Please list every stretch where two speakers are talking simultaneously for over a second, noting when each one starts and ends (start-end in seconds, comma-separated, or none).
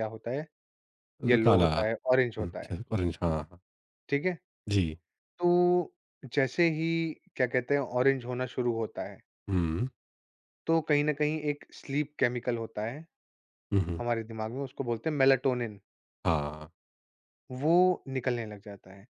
1.3-2.8